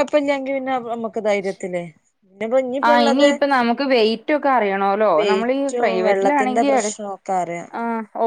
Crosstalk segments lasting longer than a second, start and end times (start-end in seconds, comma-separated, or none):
none